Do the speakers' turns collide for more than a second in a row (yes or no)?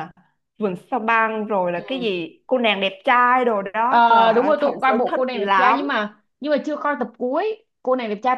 yes